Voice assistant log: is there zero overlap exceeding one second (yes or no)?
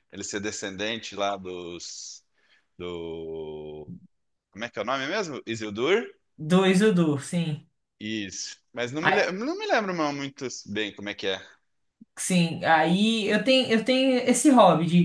yes